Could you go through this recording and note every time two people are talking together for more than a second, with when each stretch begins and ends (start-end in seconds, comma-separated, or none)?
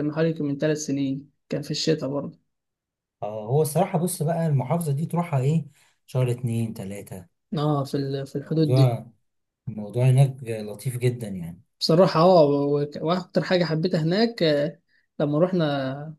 none